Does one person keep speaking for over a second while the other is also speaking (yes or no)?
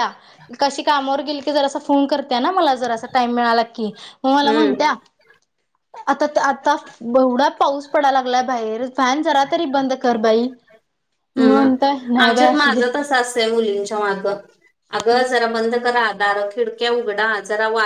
yes